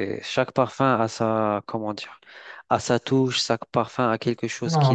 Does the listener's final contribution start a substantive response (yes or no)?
yes